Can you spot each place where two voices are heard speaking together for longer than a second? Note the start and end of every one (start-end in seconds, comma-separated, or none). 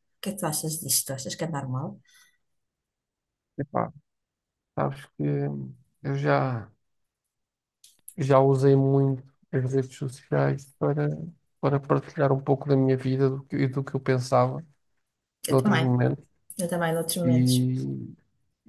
none